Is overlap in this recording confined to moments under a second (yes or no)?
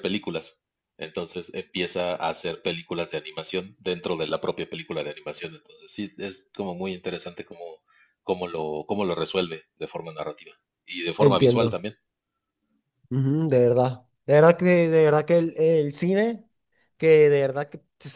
yes